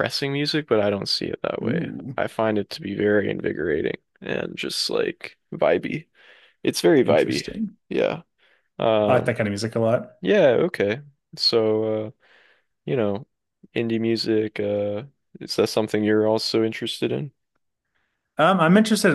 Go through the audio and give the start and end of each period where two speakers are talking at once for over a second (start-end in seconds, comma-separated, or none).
none